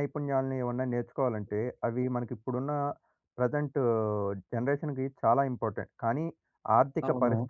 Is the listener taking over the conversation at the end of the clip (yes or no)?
no